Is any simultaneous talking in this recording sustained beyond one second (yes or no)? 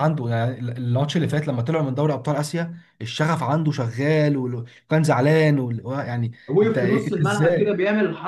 yes